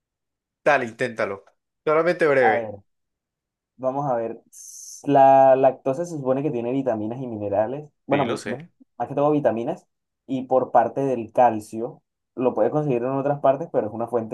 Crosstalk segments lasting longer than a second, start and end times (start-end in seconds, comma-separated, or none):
none